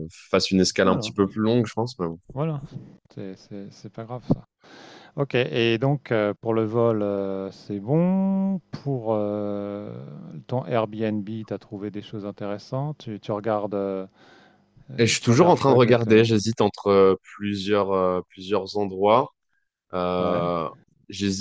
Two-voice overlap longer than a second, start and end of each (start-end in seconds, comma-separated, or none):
15.0-16.3